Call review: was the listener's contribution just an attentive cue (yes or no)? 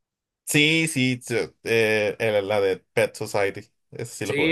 no